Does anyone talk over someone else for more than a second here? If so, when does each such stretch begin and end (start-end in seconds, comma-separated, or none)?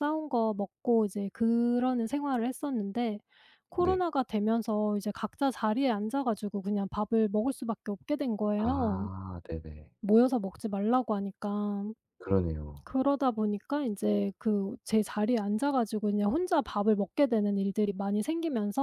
none